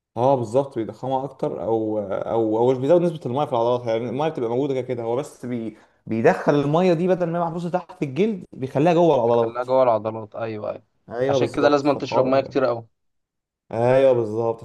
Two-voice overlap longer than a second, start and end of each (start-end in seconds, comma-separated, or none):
11.3-12.5